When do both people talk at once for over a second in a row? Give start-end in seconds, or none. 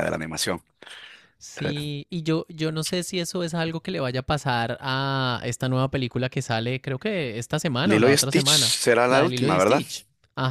7.8-9.8